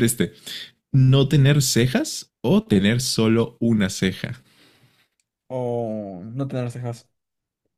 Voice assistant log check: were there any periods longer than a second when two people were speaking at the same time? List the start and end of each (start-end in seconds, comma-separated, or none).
none